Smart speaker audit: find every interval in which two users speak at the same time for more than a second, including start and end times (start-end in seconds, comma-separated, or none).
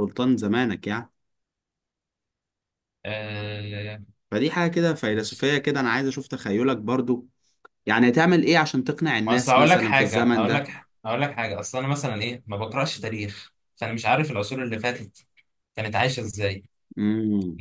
9.2-10.7